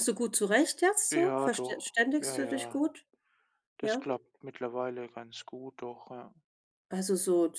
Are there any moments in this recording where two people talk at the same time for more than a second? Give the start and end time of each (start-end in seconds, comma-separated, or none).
1.1-2.8